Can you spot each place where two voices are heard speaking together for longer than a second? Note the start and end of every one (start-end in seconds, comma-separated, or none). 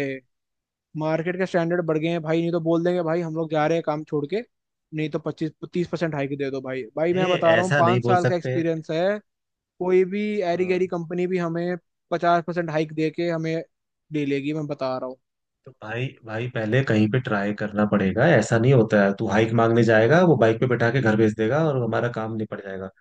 7.1-8.6